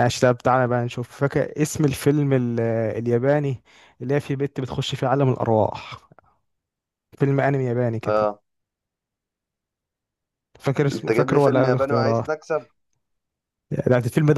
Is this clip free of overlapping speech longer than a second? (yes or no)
no